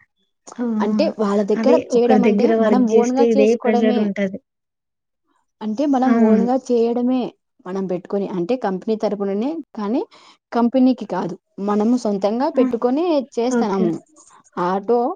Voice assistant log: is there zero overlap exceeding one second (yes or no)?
no